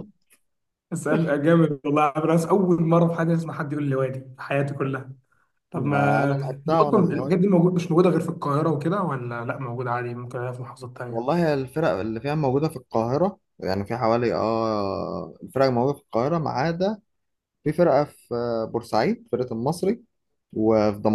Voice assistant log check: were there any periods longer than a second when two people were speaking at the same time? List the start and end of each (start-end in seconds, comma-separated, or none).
5.7-7.3